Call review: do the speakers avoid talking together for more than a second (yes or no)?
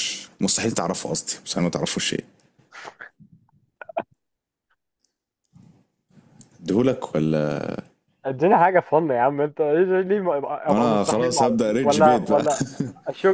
no